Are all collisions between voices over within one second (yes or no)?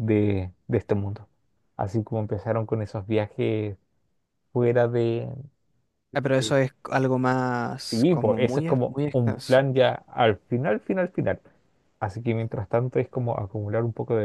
no